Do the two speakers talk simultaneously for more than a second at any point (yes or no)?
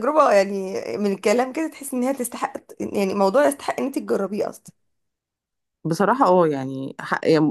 no